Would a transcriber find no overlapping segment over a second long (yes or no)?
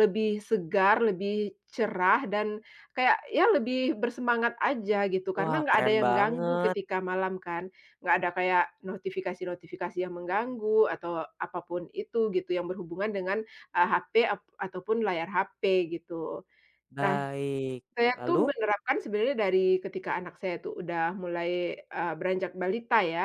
no